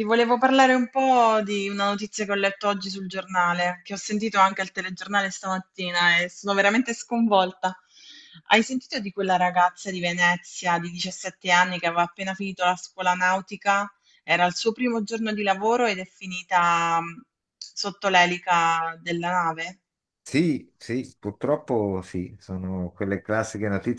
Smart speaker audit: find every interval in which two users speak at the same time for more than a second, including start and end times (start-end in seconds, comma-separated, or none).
none